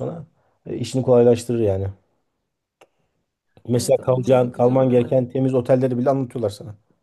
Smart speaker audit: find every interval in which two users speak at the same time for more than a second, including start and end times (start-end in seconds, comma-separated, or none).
3.7-5.2